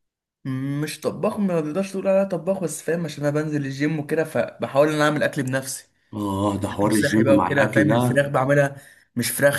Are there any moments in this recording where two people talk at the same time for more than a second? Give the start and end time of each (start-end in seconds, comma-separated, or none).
6.8-8.2